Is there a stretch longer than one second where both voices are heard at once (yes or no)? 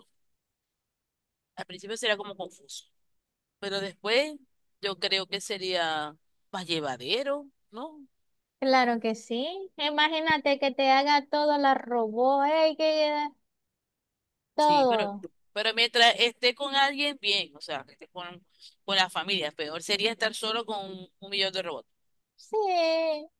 no